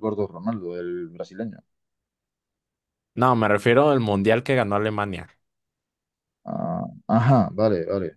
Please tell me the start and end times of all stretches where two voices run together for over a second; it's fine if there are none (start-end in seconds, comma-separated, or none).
none